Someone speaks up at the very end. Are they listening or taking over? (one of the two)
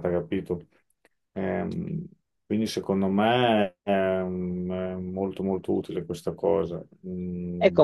taking over